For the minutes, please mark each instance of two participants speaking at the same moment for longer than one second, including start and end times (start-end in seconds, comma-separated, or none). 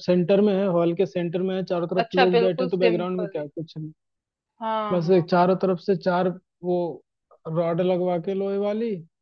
2.0-3.4